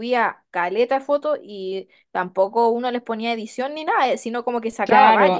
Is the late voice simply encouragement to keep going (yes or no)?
no